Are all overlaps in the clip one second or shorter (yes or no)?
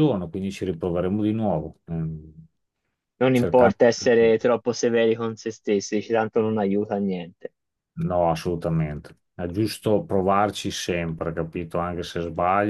yes